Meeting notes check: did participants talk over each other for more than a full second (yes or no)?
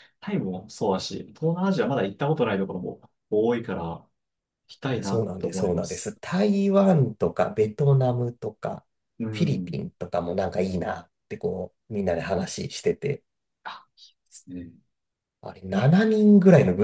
yes